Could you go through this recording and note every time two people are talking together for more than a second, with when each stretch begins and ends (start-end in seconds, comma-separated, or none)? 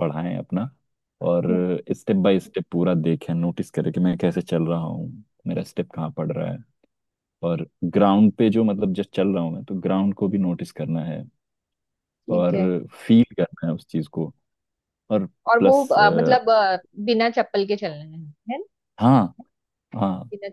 none